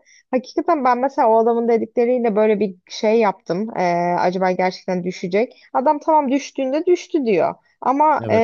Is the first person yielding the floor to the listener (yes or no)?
no